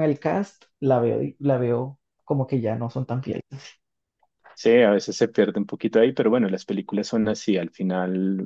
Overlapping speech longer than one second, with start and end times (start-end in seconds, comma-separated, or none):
none